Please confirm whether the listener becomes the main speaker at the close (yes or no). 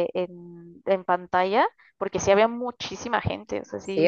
yes